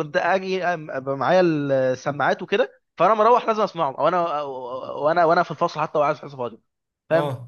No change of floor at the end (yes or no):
yes